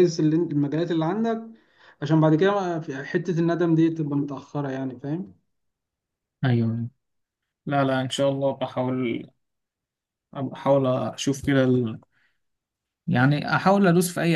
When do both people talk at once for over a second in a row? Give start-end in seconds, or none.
none